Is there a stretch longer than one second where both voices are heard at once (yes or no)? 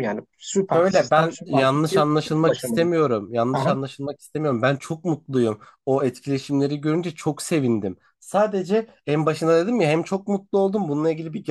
yes